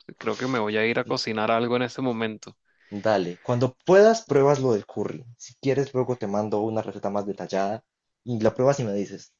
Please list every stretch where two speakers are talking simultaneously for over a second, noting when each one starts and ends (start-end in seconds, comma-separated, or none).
none